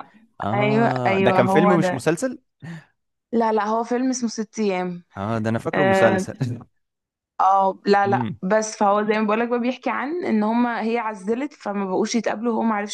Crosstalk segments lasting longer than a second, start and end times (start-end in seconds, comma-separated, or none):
0.5-2.0